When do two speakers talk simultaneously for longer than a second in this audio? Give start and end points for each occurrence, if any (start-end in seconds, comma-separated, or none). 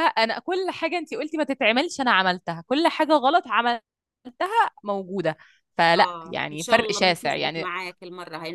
6.0-7.7